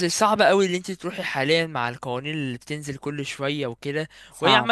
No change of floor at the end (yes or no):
yes